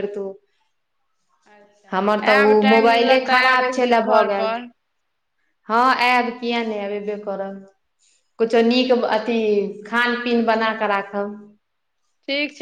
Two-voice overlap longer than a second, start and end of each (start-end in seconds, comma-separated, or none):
2.5-4.5